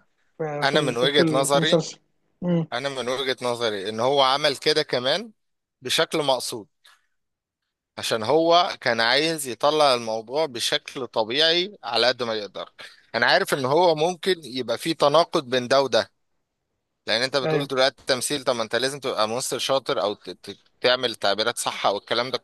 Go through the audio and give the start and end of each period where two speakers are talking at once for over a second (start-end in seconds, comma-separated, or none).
0.6-1.9